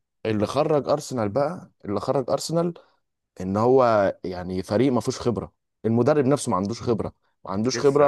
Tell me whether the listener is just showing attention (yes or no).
yes